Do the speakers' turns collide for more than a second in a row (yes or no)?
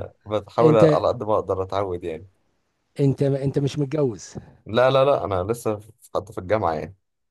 no